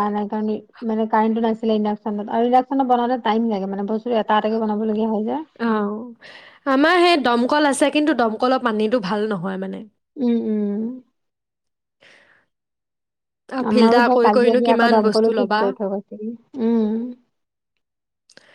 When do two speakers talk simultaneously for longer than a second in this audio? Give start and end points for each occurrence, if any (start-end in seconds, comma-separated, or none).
13.7-15.6